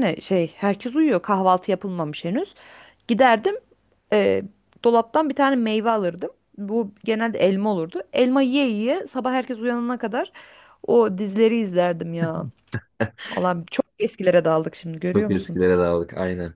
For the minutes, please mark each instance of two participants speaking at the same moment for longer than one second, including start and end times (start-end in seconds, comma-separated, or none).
none